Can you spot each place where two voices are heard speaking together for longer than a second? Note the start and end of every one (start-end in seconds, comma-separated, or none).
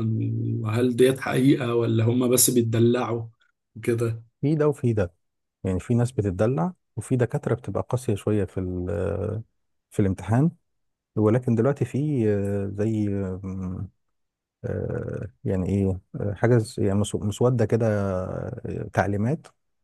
none